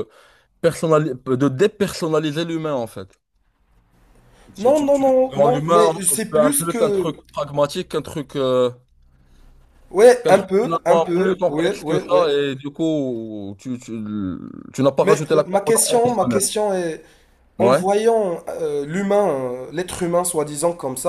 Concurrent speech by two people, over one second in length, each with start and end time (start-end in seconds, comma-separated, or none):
4.6-7.1, 10.2-12.3, 15.0-16.4